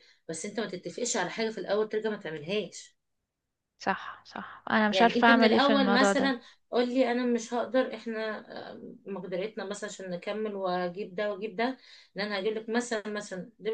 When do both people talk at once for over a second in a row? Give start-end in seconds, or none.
4.9-6.3